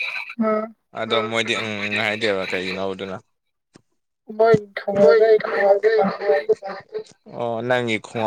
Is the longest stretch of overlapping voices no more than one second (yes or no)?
yes